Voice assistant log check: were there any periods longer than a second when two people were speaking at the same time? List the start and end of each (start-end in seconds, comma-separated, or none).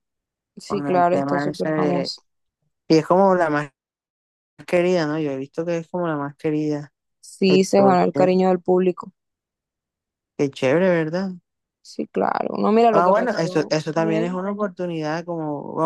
0.7-2.1, 12.9-14.4